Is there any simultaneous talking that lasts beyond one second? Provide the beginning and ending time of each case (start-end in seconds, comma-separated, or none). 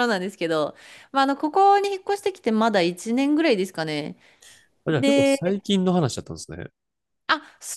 none